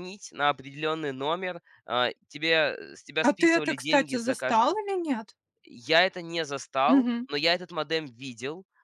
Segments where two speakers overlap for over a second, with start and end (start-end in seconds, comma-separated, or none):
3.2-4.8